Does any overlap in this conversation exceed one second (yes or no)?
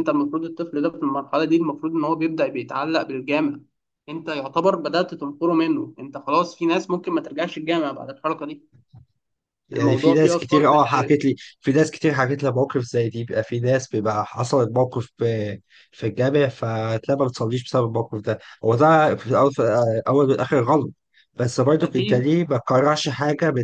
yes